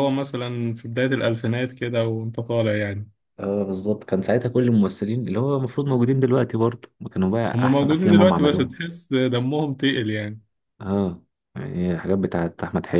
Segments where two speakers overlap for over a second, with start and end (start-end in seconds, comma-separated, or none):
7.5-8.7